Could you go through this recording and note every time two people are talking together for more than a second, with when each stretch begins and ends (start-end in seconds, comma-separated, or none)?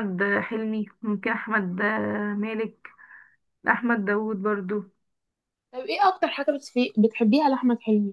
none